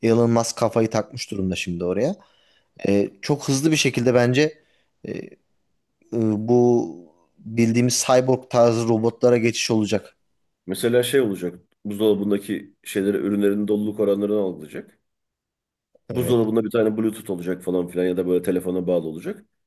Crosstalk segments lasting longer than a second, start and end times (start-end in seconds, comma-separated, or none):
none